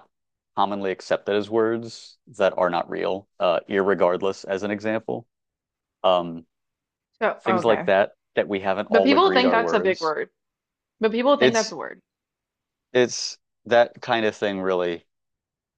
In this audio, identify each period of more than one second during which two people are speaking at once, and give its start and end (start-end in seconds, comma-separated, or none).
8.9-10.1